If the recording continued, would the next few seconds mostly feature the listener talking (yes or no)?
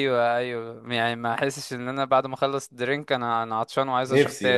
yes